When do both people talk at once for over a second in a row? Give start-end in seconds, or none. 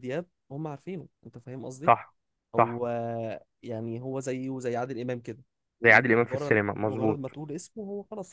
5.8-7.2